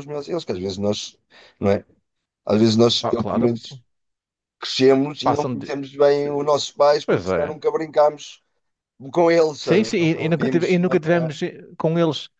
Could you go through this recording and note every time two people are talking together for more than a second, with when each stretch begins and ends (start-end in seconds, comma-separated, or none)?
9.6-11.1